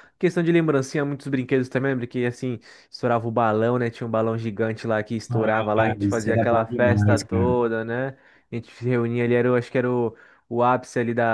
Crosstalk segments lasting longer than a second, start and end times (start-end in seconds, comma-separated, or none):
5.3-7.6